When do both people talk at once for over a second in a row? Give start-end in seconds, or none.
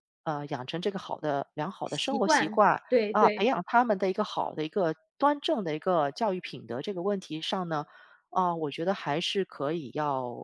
1.9-3.5